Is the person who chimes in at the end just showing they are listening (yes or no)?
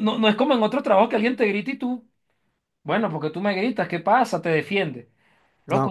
yes